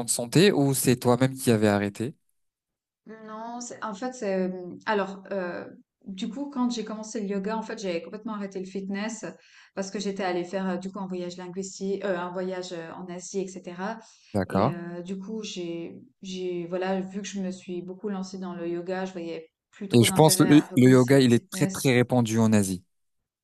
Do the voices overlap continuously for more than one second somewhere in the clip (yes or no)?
yes